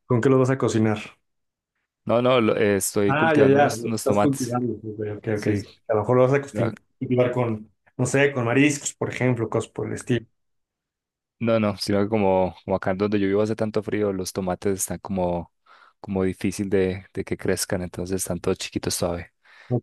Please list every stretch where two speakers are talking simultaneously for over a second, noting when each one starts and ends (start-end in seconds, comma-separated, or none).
3.0-4.6